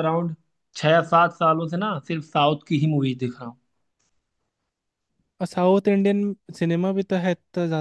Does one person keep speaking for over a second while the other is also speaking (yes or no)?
no